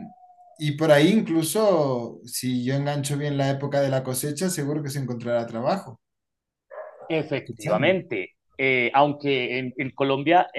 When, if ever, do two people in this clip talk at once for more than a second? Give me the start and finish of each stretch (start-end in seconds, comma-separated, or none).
none